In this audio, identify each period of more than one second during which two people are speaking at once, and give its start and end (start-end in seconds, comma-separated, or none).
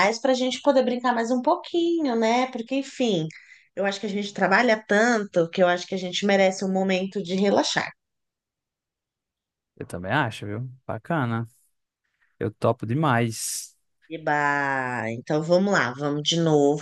none